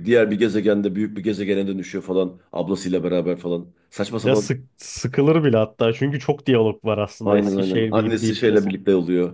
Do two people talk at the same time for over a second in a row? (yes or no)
yes